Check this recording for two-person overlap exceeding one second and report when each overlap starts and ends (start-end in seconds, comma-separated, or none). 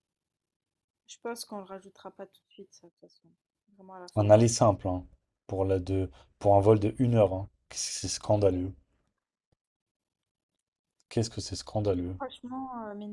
none